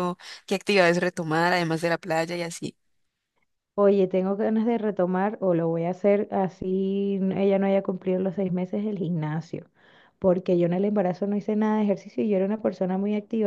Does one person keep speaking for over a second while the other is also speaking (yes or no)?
no